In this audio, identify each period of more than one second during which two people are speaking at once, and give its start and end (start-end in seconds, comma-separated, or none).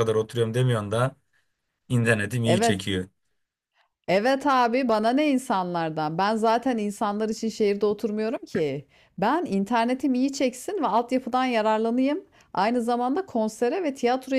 none